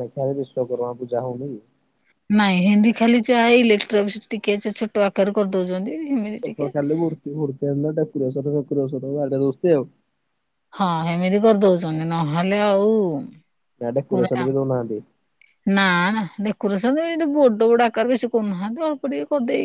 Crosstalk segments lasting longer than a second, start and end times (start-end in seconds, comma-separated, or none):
none